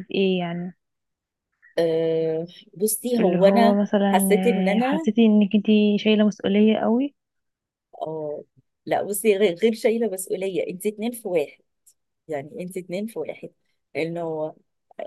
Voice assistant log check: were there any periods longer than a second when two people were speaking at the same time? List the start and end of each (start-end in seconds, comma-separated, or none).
3.2-5.1